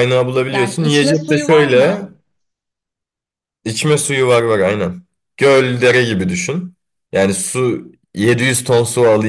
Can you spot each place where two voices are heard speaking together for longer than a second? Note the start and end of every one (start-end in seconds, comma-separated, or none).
0.5-2.1